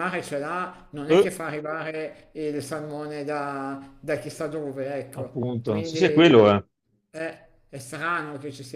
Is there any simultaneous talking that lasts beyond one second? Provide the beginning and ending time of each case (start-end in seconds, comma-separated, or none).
5.1-6.5